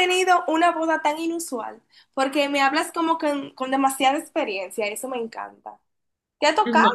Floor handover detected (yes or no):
no